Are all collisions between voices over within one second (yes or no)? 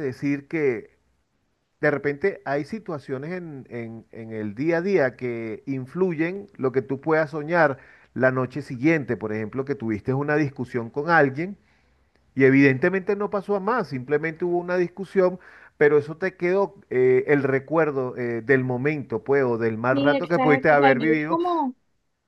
no